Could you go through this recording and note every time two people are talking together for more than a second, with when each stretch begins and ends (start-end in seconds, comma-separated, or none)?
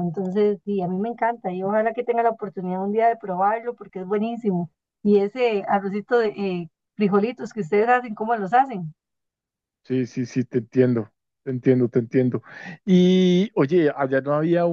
none